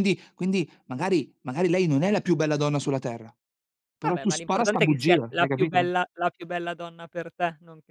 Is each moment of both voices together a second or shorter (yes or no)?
no